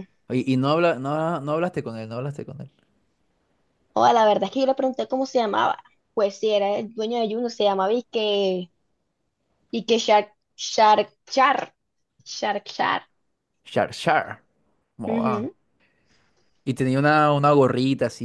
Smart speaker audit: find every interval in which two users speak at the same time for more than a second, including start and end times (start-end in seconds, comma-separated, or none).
none